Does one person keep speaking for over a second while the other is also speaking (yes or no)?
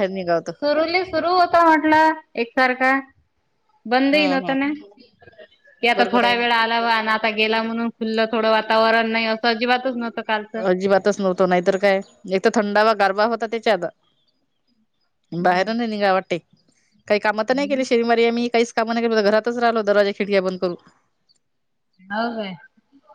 no